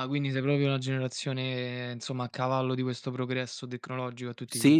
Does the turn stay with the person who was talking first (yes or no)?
no